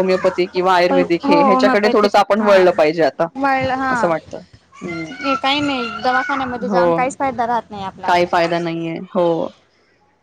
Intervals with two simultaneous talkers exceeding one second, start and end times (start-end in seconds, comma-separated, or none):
0.9-2.7